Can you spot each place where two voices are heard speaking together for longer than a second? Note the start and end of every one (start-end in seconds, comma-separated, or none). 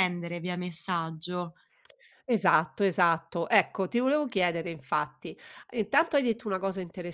none